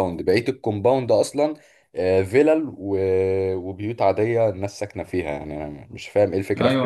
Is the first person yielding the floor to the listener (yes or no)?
yes